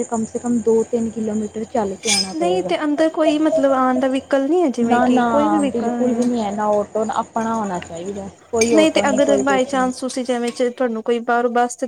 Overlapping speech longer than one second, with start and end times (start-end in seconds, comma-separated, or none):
none